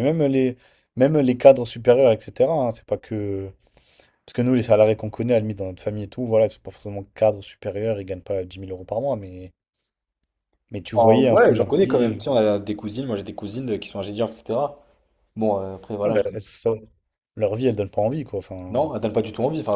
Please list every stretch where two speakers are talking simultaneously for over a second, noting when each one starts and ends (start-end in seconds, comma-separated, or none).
10.9-12.3